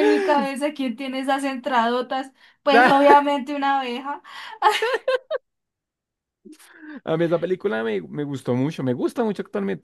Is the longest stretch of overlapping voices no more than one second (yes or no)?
yes